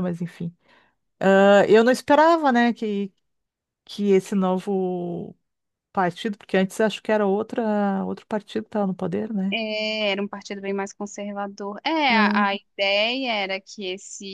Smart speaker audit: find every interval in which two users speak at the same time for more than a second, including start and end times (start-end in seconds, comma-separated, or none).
none